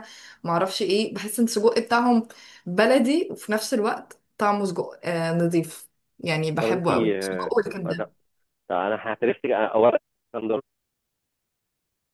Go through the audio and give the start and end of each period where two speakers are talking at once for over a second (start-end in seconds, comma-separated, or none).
6.6-8.1